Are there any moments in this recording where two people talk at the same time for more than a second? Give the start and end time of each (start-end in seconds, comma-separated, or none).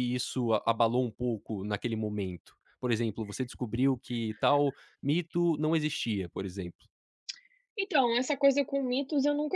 none